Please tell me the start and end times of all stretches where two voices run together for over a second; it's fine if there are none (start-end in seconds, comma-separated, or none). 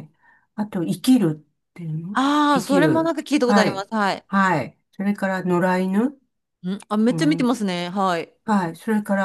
2.1-3.9